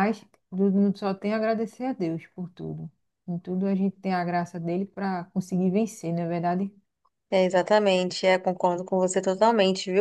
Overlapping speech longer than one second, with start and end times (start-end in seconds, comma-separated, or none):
none